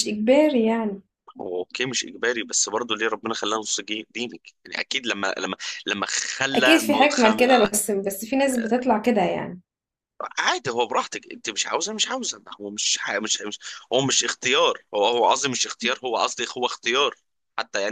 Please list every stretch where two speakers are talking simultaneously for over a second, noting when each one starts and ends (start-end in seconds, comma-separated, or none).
6.5-7.8